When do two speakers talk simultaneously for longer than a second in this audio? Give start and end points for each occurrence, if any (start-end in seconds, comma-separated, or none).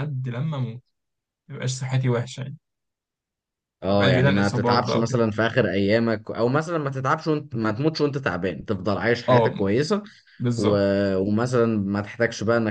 3.9-5.2